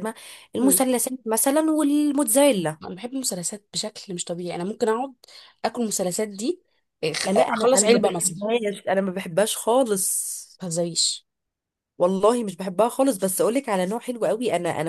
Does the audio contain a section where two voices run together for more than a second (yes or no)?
yes